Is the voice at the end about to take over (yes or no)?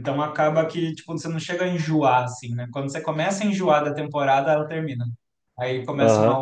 yes